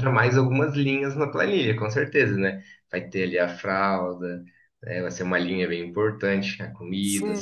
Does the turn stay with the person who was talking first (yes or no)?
no